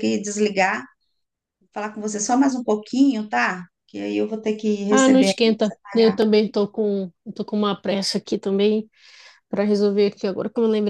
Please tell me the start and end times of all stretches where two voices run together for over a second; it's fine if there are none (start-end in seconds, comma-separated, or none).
4.9-6.2